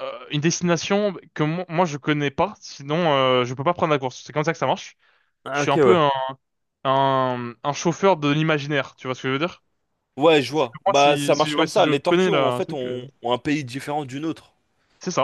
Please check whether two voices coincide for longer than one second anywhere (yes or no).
yes